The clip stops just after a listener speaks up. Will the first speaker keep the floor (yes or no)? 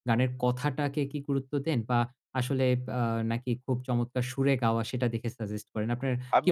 no